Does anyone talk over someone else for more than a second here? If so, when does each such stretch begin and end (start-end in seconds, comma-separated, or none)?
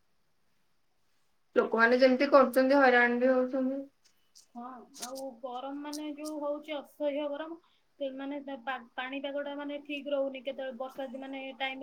none